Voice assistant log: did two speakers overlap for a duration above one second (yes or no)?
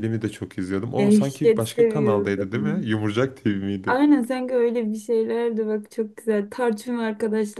yes